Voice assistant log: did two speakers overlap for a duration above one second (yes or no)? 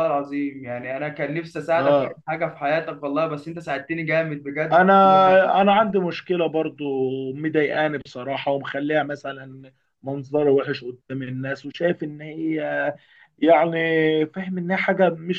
no